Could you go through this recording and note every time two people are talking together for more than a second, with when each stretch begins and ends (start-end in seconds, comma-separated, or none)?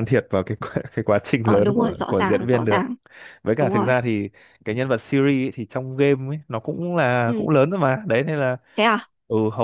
1.4-2.9